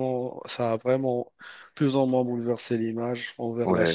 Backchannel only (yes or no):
no